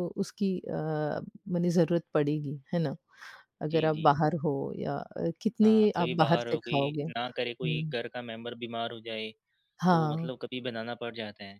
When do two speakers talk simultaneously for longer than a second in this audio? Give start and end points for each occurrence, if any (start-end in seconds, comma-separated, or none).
5.6-7.9